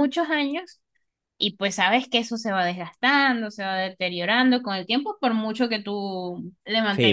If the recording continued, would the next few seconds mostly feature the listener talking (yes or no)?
yes